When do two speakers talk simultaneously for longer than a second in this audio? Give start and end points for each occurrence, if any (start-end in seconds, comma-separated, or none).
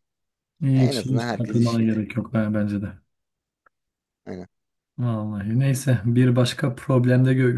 0.7-2.0